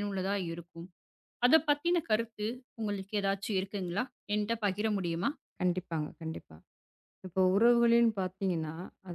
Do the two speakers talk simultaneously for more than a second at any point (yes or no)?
no